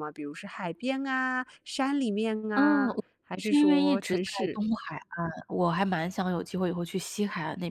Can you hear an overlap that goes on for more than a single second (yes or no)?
yes